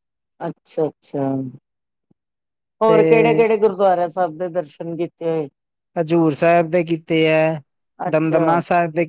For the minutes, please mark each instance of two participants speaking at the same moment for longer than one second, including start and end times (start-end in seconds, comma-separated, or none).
none